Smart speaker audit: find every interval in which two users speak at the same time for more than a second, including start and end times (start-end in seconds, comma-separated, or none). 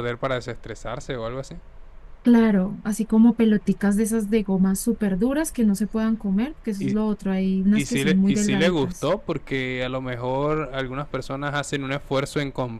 7.7-9.1